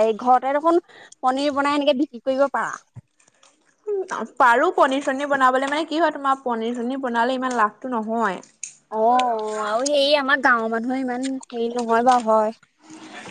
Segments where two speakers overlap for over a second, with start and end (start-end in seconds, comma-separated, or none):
none